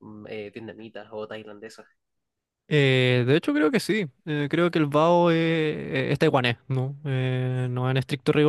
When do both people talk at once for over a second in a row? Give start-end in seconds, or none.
none